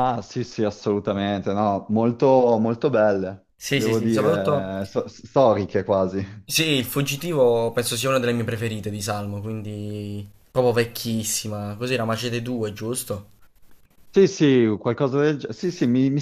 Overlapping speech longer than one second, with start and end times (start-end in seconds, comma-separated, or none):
3.5-4.8